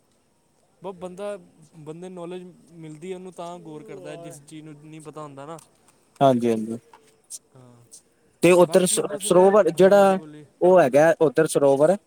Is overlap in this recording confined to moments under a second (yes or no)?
no